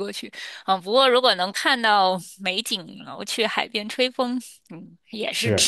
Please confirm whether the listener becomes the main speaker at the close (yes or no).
yes